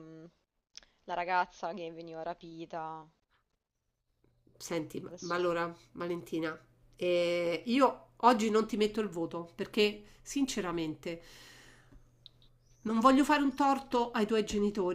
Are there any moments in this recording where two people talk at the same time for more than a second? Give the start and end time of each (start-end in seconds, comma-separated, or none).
none